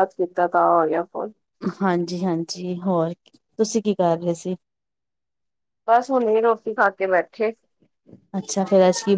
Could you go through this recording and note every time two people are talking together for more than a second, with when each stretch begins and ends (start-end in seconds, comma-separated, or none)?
none